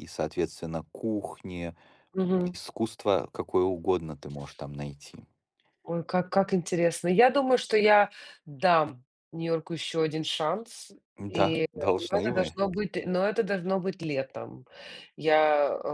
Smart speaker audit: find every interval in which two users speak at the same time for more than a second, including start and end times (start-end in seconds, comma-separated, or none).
none